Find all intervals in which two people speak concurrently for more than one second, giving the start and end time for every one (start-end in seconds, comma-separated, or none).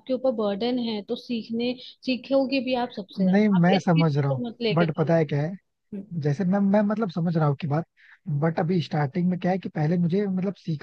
3.2-5.1